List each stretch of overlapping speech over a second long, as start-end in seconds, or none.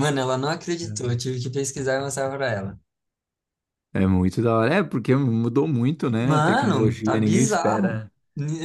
6.2-8.0